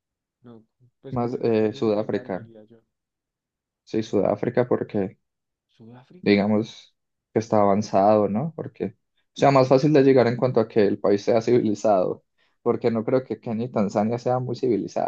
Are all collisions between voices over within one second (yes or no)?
no